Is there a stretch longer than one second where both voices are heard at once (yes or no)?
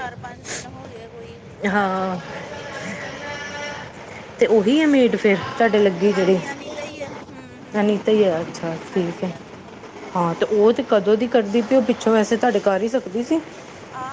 yes